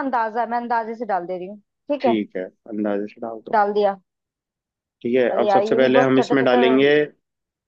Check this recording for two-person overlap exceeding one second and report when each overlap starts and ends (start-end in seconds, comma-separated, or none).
5.3-6.8